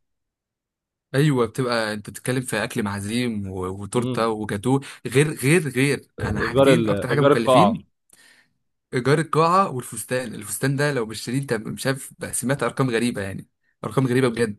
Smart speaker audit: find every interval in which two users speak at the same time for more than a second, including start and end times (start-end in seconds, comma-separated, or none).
6.4-7.7